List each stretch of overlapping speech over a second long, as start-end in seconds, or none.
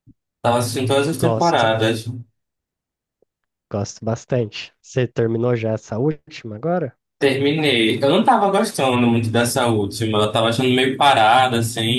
none